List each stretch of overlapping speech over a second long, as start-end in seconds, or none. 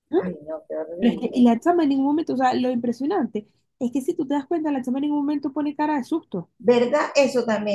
none